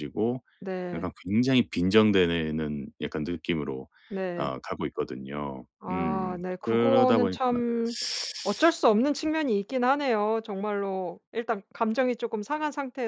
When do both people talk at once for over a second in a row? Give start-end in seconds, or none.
5.8-7.4